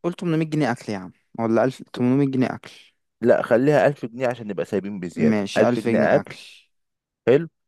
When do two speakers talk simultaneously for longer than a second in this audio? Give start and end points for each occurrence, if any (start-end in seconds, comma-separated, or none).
5.2-6.4